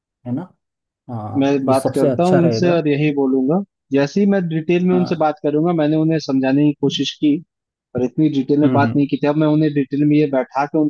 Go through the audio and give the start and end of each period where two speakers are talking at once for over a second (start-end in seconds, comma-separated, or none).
1.4-2.8